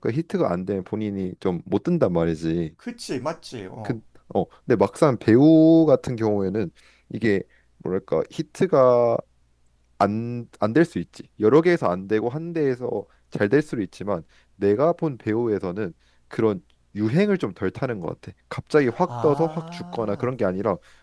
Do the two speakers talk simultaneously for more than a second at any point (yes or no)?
yes